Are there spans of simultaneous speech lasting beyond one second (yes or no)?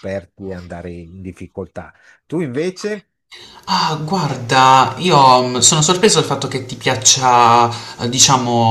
no